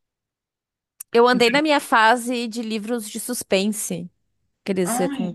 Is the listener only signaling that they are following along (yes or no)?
yes